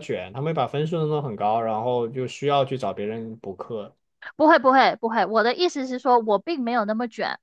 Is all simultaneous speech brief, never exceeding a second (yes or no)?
yes